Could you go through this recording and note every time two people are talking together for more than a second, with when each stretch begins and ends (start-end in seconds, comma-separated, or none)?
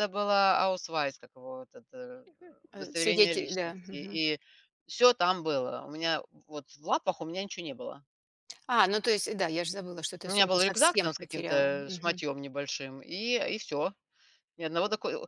2.8-4.2, 10.2-12.2